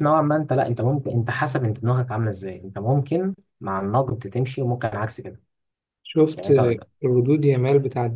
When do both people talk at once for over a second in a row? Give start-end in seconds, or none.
none